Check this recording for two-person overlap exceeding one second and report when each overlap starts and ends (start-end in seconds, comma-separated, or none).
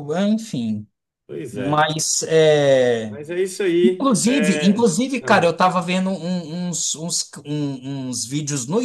3.9-5.5